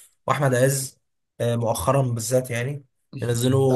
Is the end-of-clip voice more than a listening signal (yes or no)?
yes